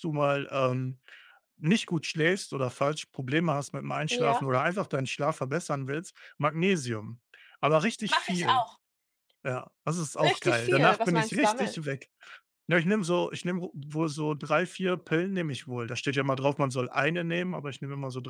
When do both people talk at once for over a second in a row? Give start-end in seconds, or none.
10.2-11.8